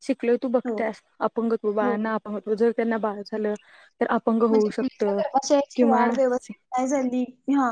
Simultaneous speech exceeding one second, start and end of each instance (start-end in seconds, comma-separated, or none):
none